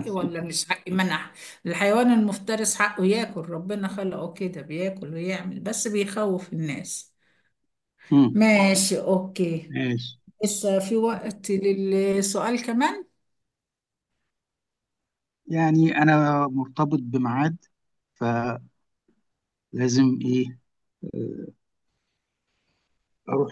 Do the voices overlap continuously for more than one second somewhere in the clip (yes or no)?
no